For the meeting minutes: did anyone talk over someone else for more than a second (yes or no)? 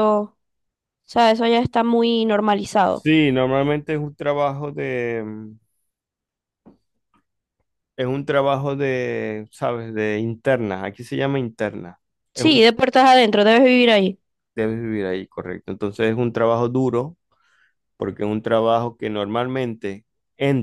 no